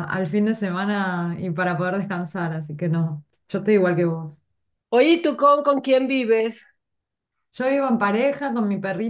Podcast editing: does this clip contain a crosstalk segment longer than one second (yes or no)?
no